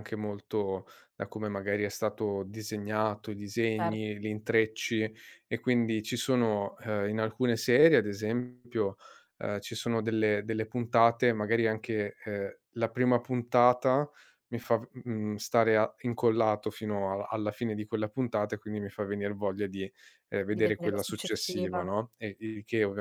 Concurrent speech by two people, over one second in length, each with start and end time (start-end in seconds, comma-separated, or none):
20.5-21.9